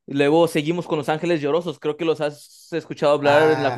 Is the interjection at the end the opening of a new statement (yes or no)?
yes